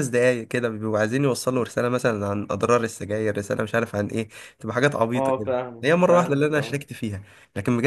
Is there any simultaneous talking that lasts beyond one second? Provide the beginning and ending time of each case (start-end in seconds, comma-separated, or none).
5.1-6.8